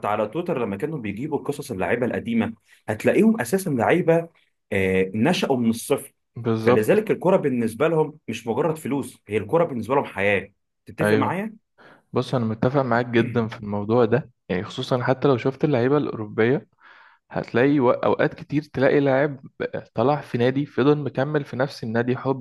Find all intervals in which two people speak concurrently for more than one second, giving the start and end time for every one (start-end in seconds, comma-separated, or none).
none